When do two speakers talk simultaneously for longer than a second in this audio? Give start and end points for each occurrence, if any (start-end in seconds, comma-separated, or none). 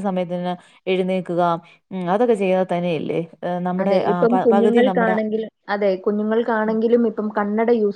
none